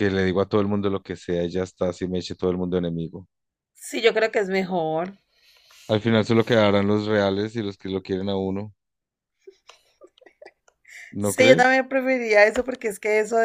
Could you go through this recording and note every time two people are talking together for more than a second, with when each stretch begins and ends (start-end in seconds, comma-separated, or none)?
none